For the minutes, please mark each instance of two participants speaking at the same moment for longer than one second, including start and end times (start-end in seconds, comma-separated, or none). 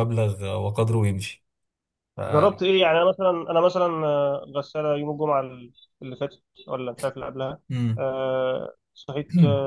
none